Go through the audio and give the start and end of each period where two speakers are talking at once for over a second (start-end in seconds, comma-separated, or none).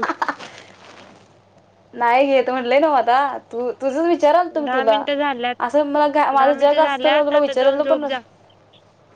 6.4-8.2